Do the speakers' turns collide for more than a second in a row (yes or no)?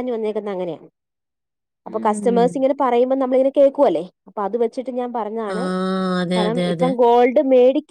no